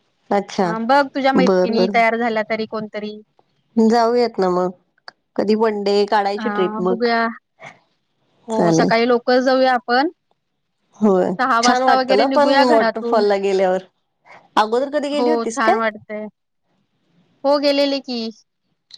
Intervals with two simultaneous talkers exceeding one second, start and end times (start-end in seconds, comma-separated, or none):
11.7-13.2